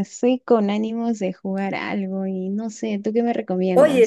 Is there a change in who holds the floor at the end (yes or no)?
yes